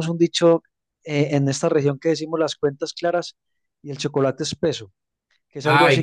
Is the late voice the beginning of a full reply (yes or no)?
yes